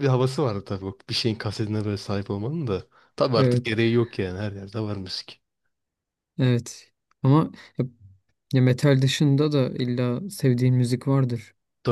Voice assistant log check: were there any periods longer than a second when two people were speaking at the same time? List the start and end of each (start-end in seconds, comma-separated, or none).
none